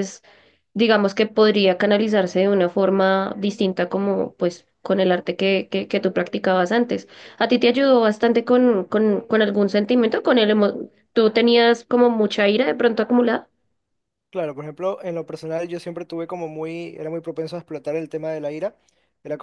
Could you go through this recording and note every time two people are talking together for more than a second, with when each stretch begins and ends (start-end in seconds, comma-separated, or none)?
none